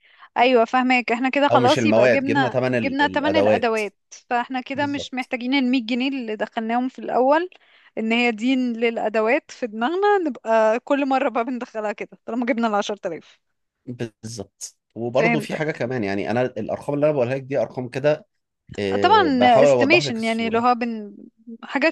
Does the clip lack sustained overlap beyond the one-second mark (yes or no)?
no